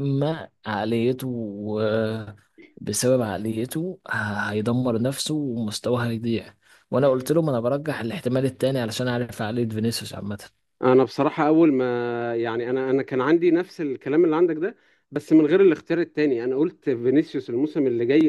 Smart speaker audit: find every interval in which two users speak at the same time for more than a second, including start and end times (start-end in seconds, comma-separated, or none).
none